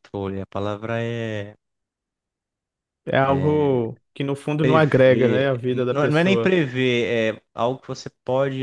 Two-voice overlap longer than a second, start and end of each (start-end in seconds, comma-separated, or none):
4.6-6.6